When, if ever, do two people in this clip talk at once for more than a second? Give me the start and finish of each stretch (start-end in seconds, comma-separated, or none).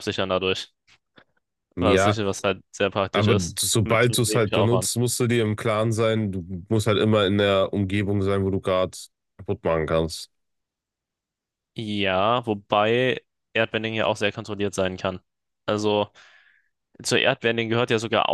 3.1-4.9